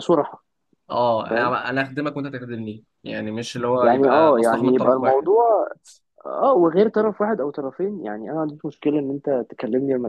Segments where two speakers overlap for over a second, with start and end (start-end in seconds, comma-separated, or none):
3.8-5.3